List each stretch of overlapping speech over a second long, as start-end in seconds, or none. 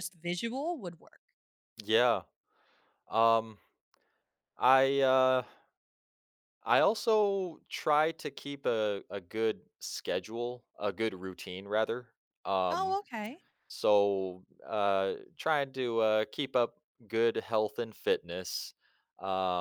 none